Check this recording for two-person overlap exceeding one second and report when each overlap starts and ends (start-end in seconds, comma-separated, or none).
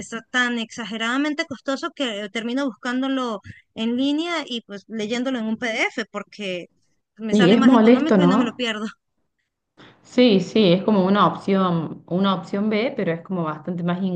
7.3-8.6